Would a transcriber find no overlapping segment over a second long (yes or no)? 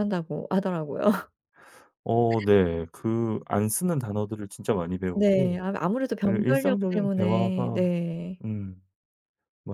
no